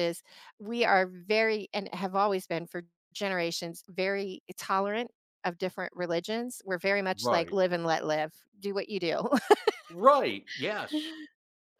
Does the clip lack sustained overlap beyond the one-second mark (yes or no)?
yes